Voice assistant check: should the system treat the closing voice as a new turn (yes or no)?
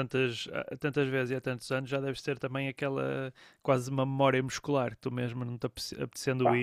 no